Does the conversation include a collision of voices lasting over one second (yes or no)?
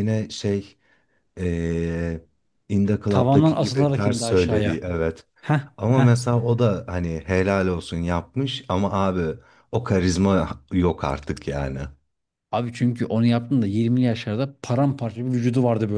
yes